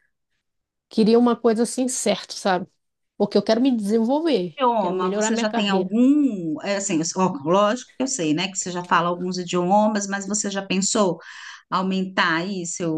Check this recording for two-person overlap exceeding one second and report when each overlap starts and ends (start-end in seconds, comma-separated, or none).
4.6-6.0